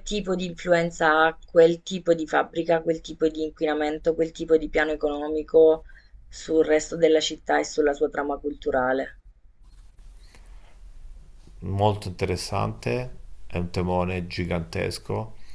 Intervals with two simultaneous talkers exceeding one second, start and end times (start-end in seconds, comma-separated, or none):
none